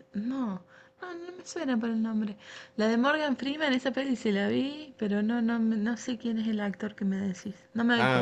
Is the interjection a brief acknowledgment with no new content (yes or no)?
no